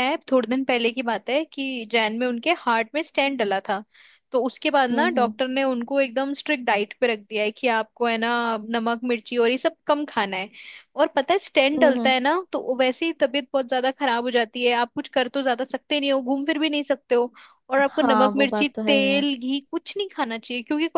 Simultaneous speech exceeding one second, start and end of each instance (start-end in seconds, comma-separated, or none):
17.9-19.2